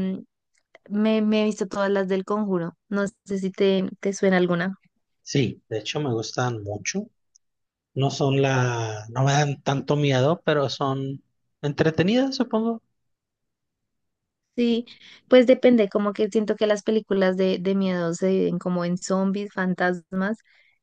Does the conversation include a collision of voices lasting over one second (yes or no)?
no